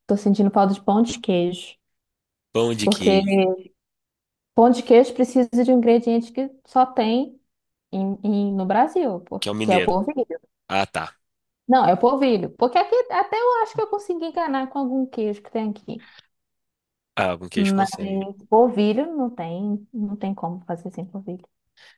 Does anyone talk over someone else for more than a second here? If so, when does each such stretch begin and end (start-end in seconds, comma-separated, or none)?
none